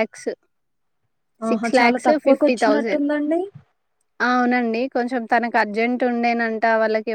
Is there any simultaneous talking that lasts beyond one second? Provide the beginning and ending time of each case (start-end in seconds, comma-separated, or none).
1.5-3.0